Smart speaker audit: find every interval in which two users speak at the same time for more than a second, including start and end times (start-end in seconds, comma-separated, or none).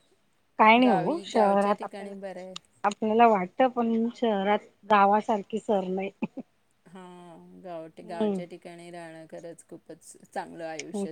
0.8-2.1